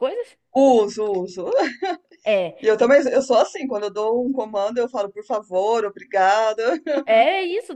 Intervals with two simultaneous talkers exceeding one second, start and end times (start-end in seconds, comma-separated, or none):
none